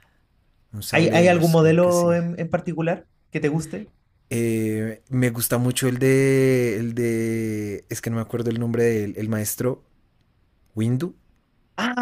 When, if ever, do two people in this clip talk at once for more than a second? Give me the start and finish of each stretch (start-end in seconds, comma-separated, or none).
0.9-2.2